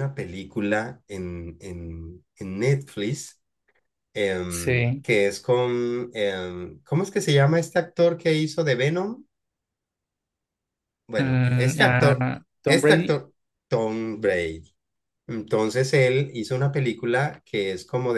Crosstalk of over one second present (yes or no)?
yes